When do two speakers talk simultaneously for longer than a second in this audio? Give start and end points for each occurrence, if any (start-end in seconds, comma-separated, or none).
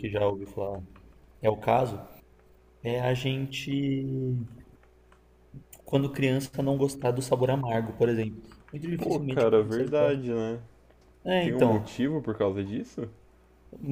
9.0-10.2